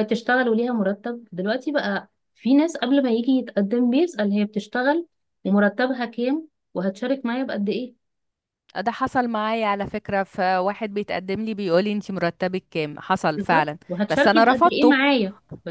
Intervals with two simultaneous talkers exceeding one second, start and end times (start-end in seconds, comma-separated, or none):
13.4-15.0